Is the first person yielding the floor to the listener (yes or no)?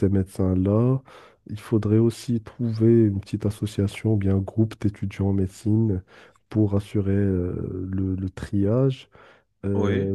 no